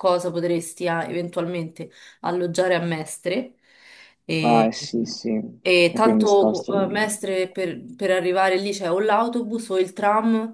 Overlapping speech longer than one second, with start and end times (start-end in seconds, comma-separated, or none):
5.6-7.1